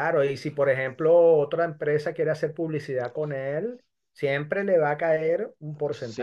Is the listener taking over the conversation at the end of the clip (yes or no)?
yes